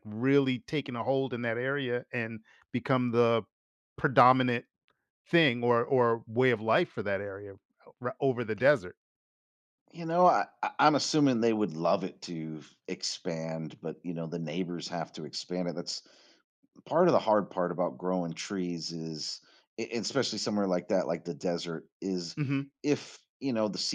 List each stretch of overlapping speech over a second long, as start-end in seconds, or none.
none